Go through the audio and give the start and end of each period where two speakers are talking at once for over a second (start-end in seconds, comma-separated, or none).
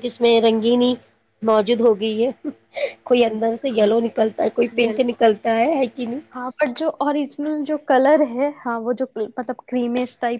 none